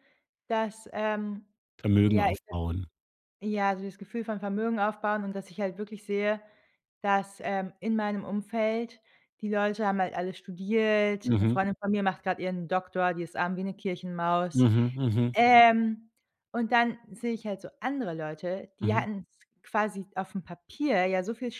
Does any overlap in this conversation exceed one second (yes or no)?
no